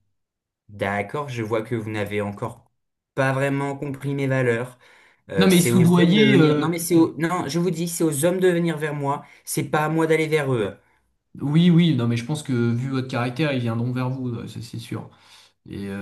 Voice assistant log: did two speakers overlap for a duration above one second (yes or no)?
yes